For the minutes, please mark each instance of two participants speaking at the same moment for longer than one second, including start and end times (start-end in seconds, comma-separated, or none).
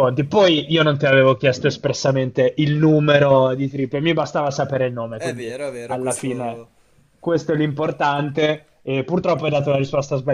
5.1-6.6